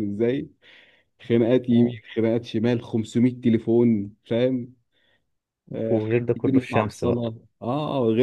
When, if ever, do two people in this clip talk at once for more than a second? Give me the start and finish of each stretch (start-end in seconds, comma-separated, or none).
5.9-7.2